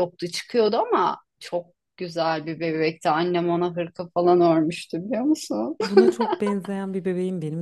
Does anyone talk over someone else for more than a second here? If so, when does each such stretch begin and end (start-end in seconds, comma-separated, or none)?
none